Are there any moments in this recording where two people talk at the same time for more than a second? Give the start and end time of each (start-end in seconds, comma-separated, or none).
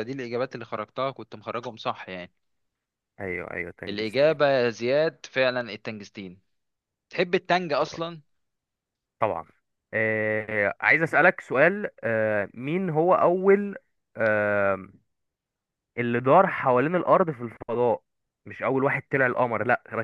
none